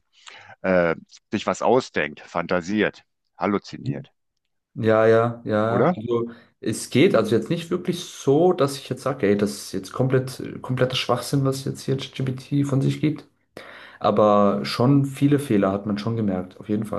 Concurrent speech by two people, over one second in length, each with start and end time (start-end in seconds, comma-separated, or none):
none